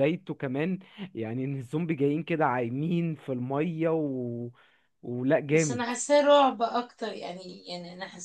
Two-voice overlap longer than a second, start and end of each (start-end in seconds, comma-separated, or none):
none